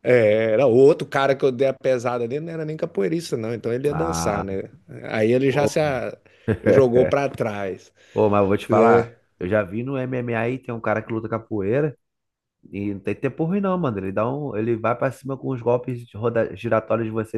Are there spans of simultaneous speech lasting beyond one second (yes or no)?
no